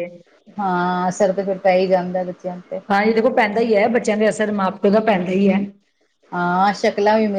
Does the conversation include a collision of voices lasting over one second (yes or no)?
no